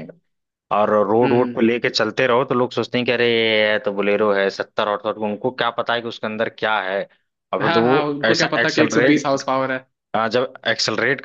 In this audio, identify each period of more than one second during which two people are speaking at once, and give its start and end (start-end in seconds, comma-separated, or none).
7.6-9.3